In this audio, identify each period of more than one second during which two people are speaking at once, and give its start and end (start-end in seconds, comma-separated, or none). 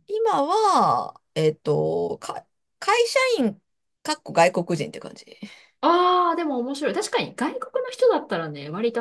none